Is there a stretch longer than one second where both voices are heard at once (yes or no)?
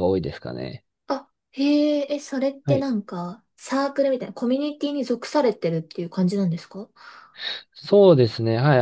no